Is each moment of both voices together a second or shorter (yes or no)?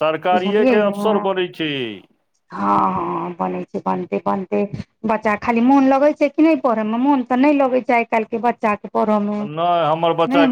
yes